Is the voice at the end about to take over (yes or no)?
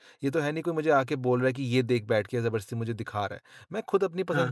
no